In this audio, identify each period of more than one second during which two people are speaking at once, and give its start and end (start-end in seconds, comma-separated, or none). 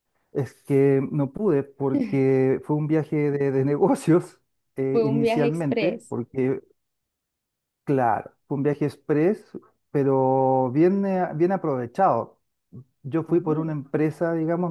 4.9-6.1